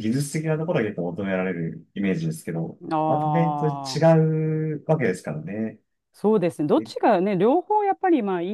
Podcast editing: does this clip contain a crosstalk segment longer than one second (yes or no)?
yes